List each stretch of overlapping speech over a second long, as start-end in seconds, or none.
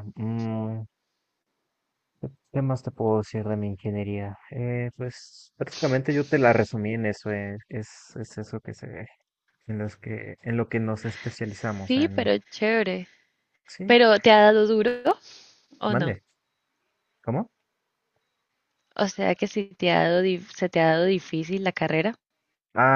none